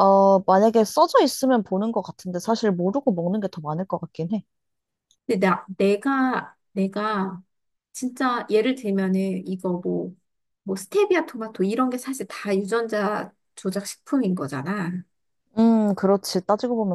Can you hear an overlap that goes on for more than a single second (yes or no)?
no